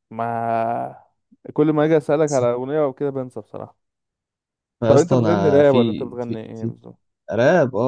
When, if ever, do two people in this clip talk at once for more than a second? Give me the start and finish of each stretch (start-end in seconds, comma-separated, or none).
4.9-6.7